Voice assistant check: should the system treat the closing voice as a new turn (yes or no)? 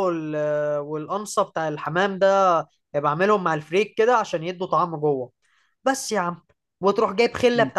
no